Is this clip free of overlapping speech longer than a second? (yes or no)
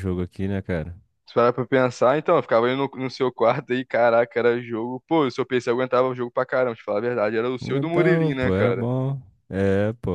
no